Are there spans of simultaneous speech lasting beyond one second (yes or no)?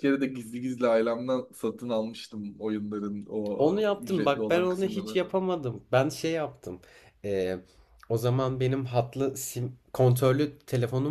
yes